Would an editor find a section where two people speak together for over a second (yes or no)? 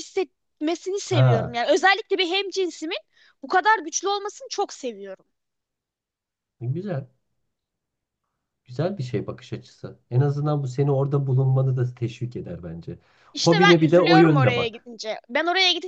yes